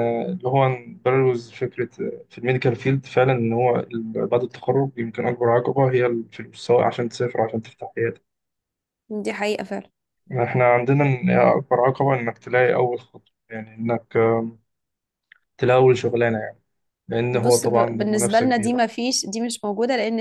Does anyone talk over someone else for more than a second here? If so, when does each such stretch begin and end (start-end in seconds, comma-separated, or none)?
17.3-18.8